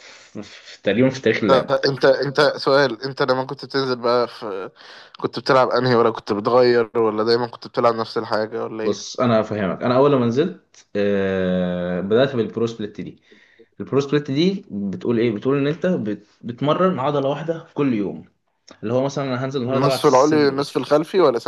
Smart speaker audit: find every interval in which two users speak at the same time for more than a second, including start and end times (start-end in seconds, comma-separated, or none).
19.7-20.9